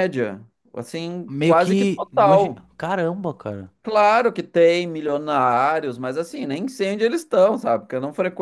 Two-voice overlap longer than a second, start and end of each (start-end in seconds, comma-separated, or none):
1.3-2.6